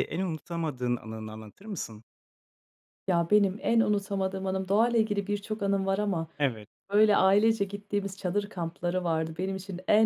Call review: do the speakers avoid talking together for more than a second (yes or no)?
yes